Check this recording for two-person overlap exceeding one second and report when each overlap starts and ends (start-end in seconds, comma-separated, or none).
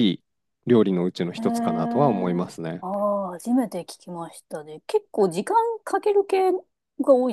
1.4-2.8